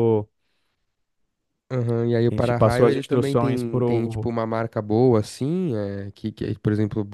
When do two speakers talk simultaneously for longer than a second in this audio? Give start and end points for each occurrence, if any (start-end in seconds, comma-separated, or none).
2.3-4.3